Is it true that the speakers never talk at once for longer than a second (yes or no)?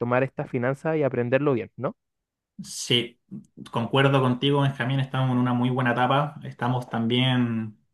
yes